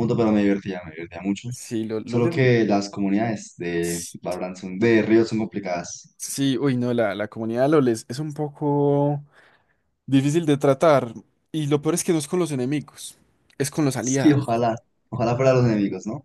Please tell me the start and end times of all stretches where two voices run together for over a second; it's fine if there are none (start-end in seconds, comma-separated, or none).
none